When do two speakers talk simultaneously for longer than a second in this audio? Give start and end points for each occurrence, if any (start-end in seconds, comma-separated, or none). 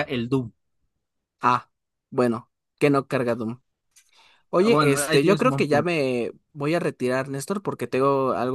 4.6-6.0